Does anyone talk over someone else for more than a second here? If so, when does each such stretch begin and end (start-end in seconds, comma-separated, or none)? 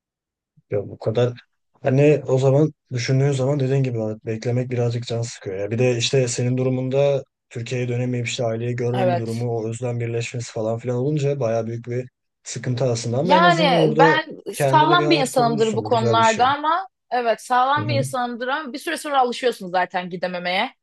13.2-16.4